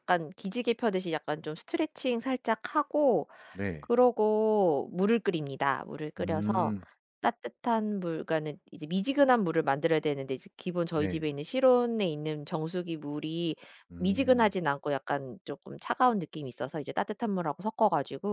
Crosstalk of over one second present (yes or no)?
no